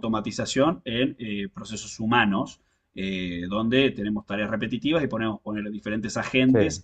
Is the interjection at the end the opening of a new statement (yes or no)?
no